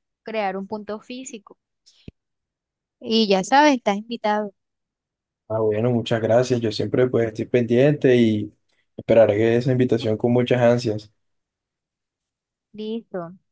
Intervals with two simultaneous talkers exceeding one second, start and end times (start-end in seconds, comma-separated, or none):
none